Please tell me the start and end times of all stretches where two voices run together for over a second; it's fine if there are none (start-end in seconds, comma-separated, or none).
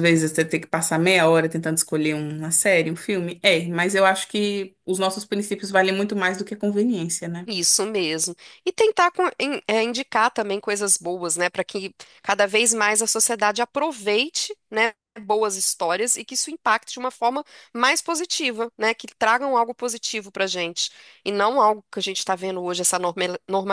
none